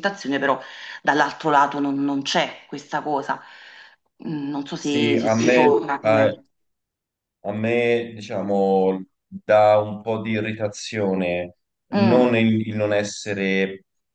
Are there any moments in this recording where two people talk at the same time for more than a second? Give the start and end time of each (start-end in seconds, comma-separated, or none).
4.8-6.3